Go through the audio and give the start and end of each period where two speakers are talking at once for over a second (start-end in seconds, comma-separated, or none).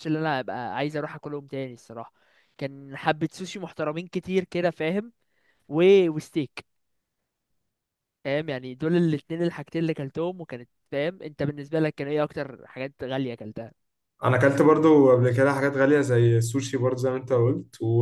none